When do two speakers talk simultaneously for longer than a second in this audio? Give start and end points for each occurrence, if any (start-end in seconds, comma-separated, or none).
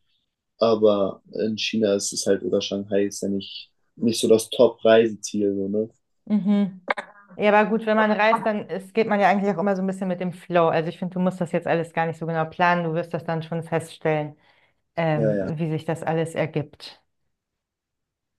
none